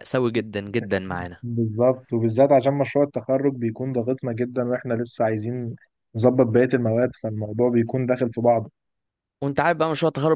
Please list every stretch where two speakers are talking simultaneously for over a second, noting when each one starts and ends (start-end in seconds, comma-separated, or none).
none